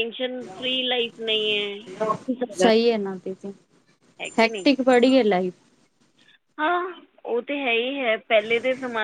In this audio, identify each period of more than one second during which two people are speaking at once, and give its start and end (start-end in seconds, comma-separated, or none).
none